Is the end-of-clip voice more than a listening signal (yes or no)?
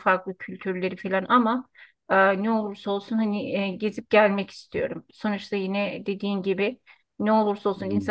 no